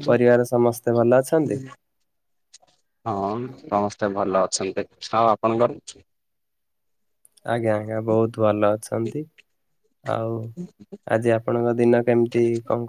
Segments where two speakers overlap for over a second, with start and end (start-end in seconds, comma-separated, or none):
none